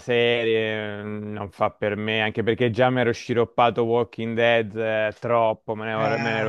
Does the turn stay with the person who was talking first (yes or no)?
yes